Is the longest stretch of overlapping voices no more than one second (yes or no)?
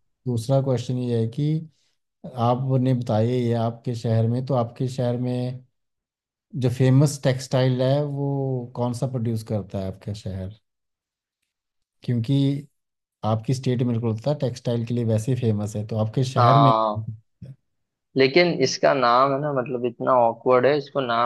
yes